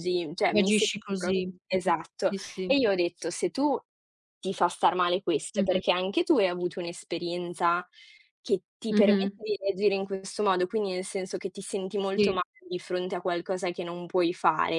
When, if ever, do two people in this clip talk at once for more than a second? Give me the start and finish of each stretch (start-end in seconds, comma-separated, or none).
0.5-2.7